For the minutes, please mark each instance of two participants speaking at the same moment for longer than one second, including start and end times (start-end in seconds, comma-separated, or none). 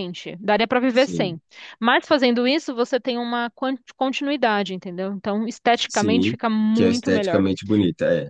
5.7-7.4